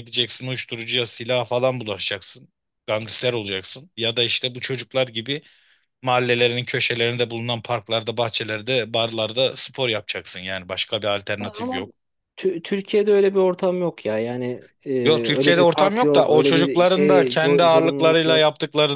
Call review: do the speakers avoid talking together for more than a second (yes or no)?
no